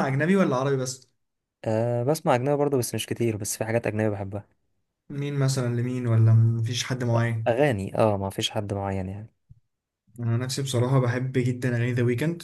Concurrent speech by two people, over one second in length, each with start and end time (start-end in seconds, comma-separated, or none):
none